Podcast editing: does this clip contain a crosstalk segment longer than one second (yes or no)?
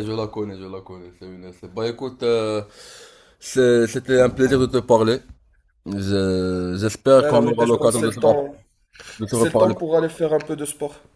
yes